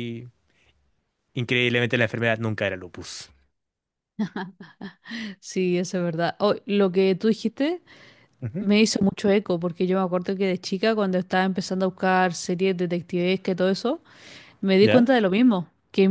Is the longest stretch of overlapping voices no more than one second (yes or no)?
yes